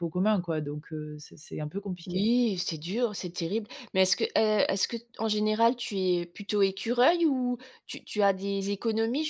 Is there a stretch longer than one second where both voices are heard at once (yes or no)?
no